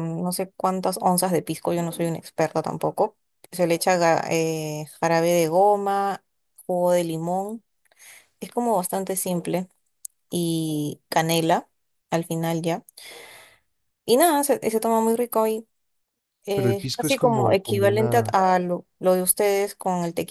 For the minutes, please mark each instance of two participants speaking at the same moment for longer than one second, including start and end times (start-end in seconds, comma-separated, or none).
16.5-18.4